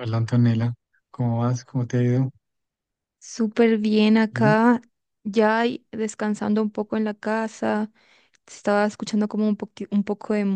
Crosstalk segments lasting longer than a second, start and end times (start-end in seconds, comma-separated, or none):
none